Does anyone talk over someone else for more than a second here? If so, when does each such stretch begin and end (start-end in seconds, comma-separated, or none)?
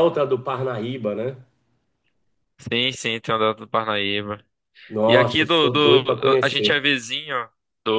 5.1-6.8